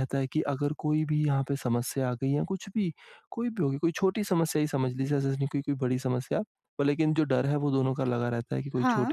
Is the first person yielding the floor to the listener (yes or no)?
no